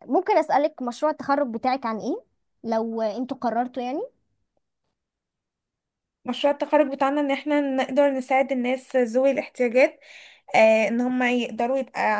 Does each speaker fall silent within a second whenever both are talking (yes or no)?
yes